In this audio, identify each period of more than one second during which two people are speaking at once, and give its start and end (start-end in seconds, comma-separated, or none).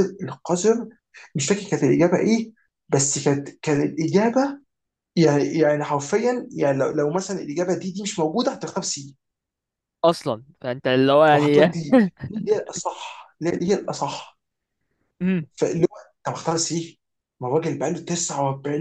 none